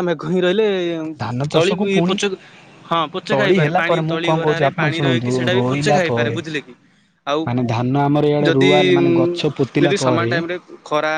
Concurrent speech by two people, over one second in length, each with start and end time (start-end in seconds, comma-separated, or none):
3.3-6.4